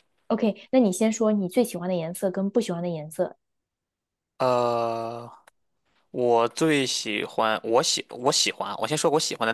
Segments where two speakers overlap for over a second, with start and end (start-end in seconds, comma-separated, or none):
none